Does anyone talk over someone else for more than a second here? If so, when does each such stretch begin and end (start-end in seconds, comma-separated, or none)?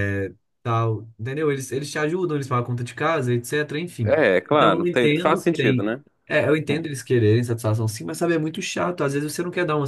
4.0-5.9